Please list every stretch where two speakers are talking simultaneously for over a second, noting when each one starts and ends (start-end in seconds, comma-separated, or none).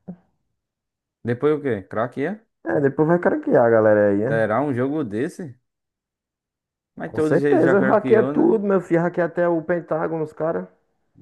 7.1-8.6